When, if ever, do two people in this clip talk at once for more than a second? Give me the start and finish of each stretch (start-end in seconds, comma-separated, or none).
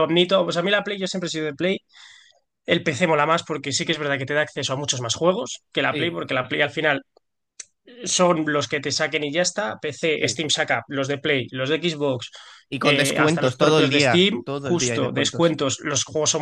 12.8-15.6